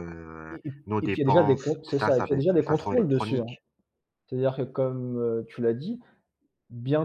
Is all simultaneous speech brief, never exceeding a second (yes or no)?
no